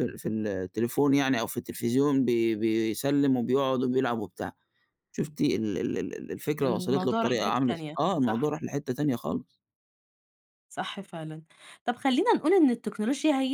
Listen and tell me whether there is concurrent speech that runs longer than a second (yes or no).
yes